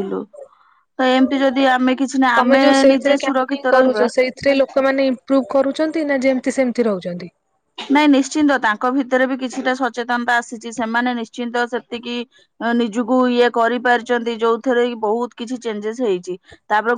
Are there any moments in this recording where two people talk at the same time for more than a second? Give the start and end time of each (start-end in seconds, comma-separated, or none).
2.4-4.0